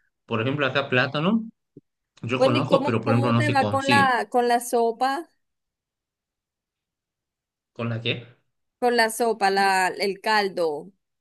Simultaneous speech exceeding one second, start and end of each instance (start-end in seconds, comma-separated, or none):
2.4-4.1